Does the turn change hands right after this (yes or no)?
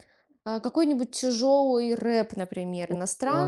yes